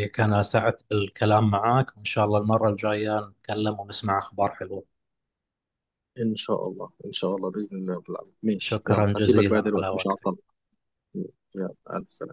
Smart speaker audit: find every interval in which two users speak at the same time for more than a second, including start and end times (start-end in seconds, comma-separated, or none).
8.6-10.3